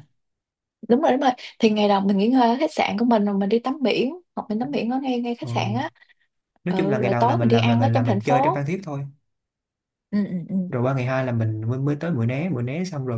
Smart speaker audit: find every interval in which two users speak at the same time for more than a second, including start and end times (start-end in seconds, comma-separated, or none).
6.7-8.7